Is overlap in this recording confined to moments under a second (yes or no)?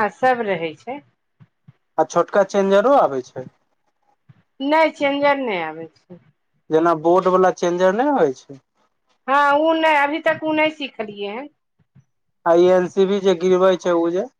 yes